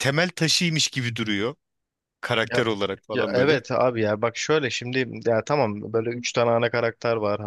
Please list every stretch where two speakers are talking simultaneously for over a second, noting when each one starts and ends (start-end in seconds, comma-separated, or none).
none